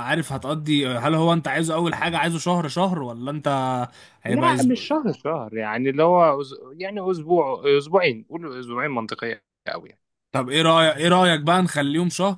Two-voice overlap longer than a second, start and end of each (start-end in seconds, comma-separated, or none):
none